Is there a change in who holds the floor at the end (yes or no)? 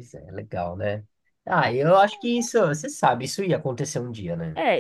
yes